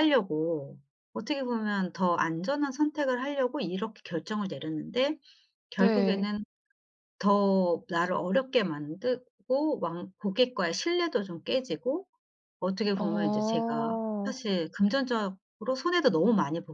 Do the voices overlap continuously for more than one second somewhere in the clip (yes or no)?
yes